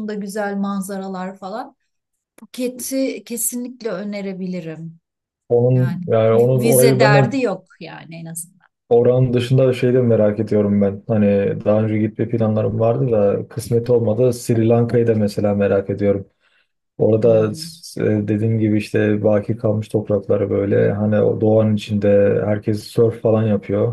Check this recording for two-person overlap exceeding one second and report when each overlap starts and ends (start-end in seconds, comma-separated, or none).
5.7-7.4